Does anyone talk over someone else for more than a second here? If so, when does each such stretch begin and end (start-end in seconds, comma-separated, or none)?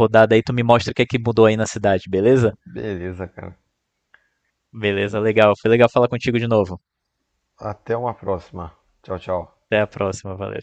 none